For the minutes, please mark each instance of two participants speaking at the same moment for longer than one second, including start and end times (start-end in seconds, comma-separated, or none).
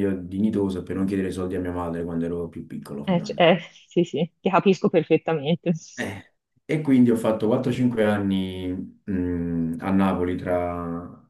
none